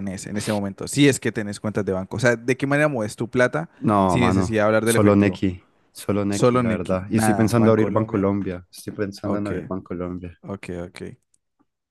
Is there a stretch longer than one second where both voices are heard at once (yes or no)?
yes